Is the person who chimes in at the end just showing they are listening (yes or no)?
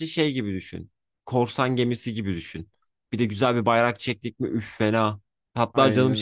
yes